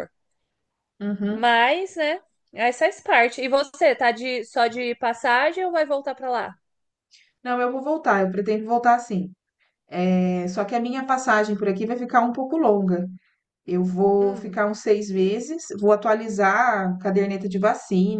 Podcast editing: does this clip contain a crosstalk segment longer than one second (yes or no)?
no